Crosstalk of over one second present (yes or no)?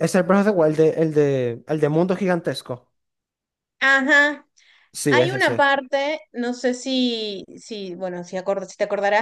no